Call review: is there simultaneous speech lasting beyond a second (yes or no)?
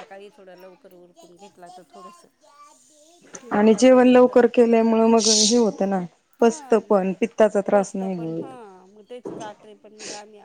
no